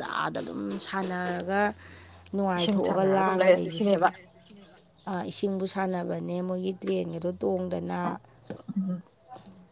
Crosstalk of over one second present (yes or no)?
yes